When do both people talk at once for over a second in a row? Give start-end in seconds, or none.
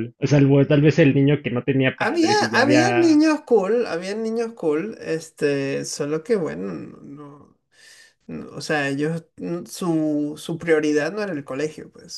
2.0-3.2